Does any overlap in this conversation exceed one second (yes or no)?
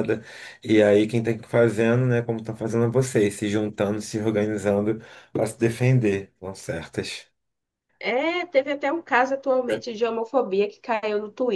no